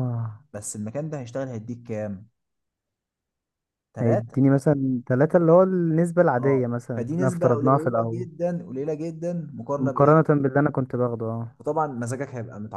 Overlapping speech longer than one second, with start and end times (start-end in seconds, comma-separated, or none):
6.4-8.2